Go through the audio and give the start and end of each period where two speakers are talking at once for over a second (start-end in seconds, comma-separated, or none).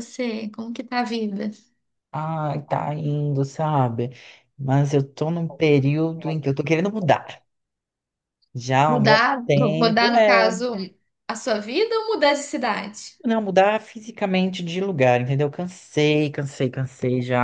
8.9-10.5